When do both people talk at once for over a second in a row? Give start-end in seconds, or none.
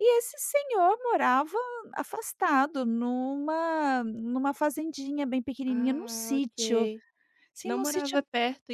5.7-6.9